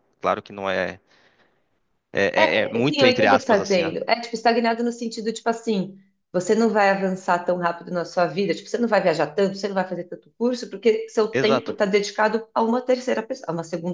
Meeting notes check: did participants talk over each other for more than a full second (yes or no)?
yes